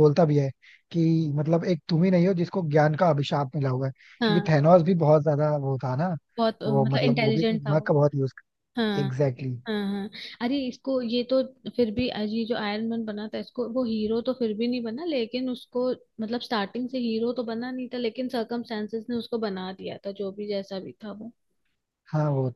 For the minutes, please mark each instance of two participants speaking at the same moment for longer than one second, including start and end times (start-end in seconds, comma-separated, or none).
6.7-7.9